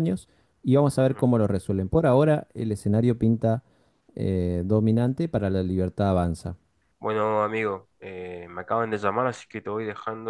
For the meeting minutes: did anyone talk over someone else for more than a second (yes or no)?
no